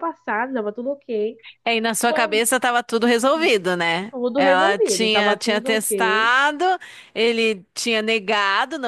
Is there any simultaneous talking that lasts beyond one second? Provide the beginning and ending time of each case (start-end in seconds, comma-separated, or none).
4.1-6.3